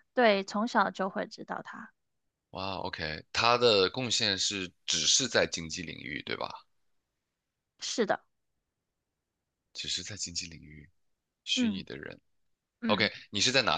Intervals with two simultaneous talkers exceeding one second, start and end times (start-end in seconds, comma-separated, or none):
none